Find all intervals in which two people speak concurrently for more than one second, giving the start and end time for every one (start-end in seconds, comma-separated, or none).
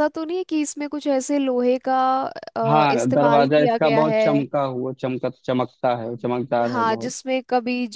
2.7-4.2